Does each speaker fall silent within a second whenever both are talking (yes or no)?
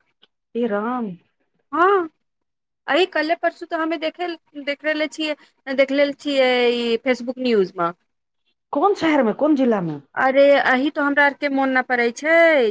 yes